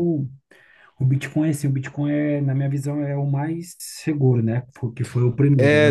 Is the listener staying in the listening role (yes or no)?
no